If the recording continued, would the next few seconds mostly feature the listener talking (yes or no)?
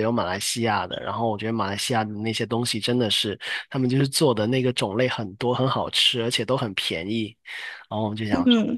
no